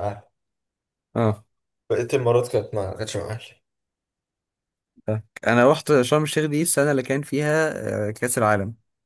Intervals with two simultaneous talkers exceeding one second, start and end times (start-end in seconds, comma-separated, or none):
none